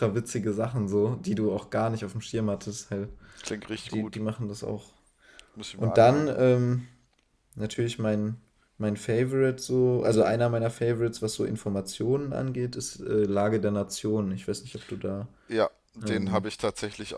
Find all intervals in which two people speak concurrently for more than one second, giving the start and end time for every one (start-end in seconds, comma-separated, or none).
none